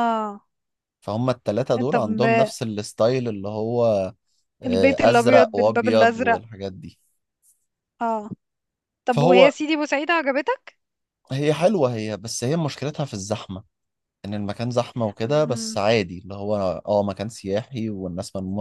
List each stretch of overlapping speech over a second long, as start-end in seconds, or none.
4.7-6.4